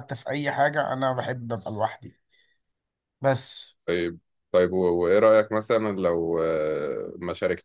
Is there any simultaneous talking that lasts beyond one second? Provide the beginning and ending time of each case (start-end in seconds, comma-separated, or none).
none